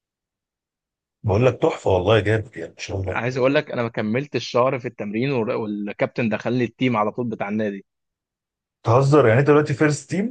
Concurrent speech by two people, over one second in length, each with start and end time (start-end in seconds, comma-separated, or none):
none